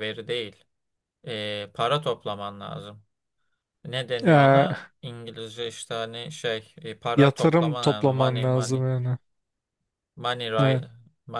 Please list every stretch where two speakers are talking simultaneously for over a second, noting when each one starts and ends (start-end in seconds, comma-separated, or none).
7.2-8.8